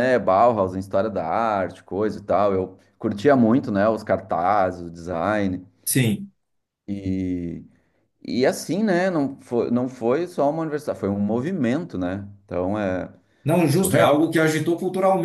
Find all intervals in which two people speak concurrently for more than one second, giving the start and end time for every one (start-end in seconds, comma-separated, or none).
none